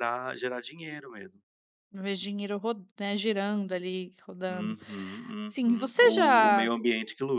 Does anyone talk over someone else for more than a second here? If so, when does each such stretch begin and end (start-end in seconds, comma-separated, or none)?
5.5-6.7